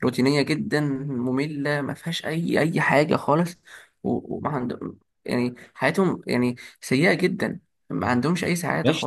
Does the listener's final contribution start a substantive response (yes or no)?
yes